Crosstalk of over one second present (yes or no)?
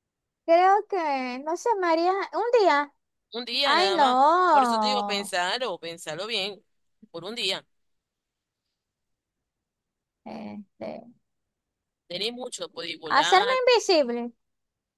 yes